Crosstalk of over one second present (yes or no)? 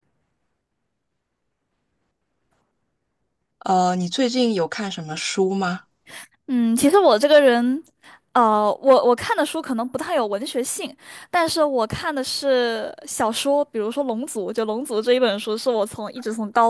no